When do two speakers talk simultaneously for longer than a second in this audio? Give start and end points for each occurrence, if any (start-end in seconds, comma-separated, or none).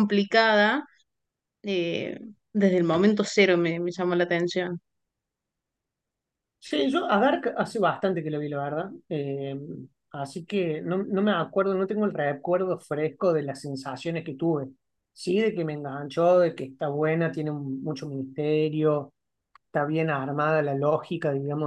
none